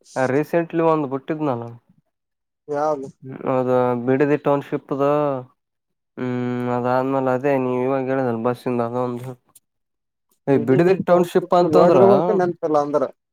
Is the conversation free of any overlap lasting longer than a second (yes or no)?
yes